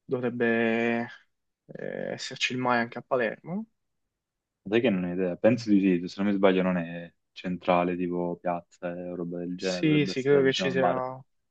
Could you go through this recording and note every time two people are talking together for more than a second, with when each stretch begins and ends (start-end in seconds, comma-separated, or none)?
9.6-10.8